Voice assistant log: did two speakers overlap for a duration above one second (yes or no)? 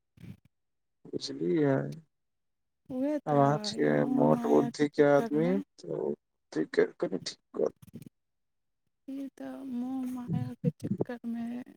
yes